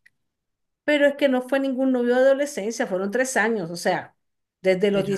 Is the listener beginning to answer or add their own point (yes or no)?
no